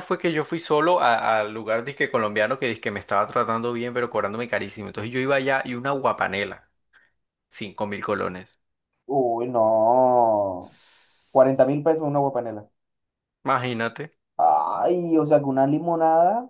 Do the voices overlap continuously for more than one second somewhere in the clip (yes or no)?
no